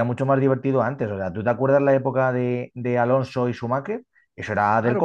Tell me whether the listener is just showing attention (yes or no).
no